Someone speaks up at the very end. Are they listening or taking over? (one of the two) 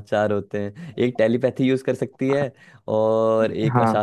listening